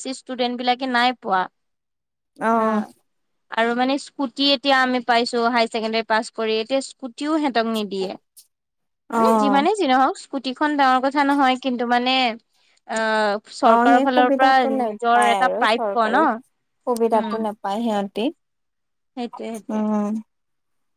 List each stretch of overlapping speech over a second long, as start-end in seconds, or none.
13.6-15.6